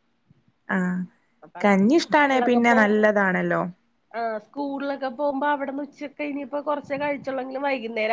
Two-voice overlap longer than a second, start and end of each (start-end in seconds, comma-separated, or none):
none